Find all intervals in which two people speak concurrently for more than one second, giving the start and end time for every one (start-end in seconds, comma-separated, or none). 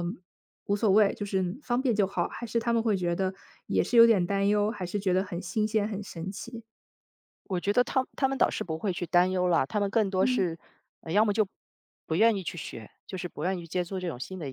none